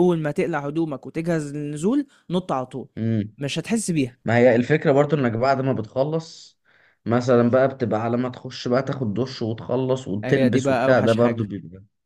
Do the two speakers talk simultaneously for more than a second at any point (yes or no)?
yes